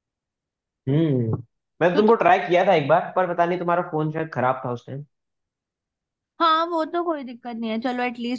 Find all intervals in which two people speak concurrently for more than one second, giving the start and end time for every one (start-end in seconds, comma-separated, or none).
none